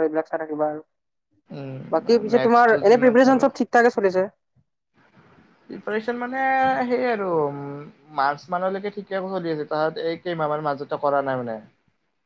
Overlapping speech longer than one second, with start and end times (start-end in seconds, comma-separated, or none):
1.5-3.4